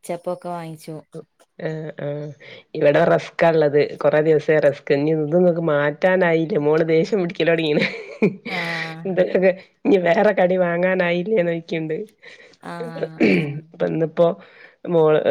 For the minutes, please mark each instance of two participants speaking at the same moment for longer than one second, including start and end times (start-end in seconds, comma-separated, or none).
none